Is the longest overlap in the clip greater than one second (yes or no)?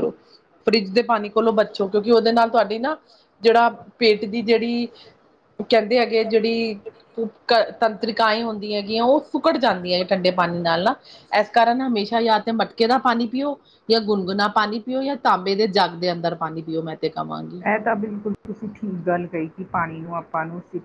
no